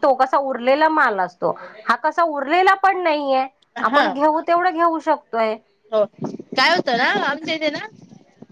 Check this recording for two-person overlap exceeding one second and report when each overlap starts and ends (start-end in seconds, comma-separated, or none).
none